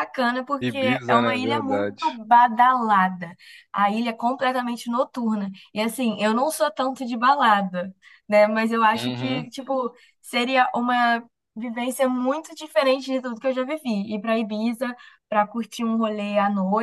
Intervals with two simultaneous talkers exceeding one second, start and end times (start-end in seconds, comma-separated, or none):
0.6-1.9